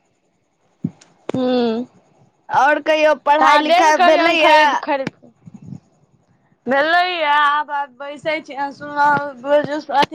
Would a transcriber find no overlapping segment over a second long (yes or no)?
no